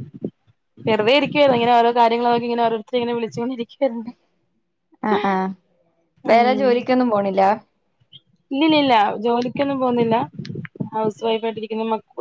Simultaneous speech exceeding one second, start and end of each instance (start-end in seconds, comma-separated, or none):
none